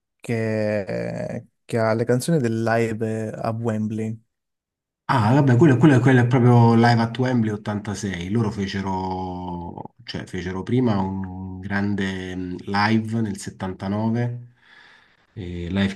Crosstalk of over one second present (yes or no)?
no